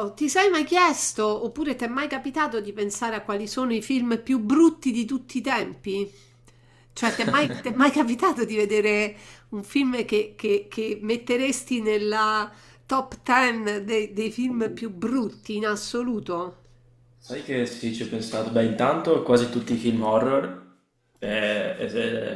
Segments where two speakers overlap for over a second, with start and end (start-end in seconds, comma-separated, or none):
none